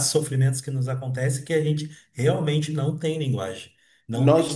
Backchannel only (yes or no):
no